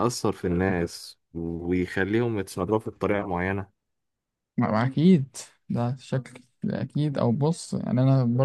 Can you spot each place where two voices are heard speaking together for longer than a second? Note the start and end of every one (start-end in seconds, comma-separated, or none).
none